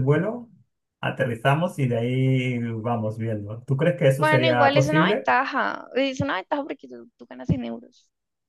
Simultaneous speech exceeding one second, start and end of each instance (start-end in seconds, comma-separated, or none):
4.1-5.3